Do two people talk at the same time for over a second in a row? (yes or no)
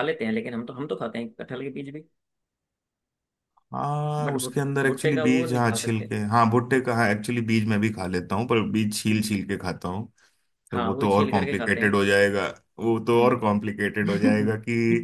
yes